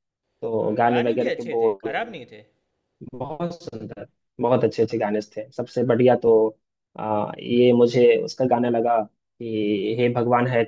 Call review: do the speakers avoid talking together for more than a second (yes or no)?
no